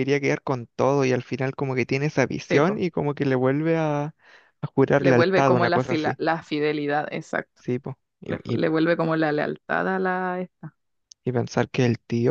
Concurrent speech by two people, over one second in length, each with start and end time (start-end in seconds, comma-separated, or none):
5.0-6.2